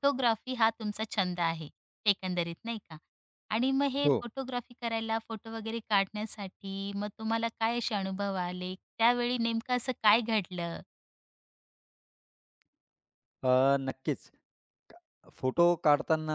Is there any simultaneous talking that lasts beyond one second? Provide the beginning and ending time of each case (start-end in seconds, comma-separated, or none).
none